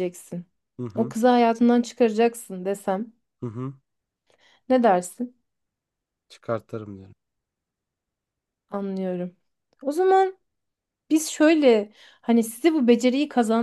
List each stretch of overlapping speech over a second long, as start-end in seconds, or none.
none